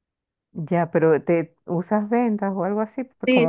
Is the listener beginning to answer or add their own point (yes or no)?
yes